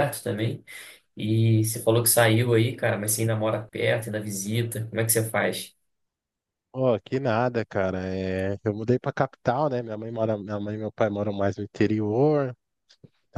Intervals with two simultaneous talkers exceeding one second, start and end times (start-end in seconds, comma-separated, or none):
none